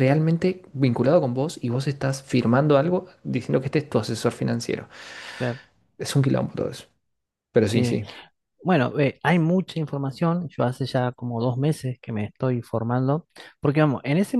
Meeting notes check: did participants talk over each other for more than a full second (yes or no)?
no